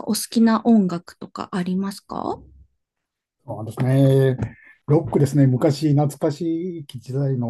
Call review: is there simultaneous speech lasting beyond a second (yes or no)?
no